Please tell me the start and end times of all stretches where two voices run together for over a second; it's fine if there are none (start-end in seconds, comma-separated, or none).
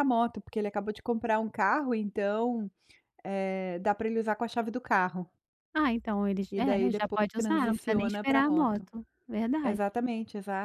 6.5-8.9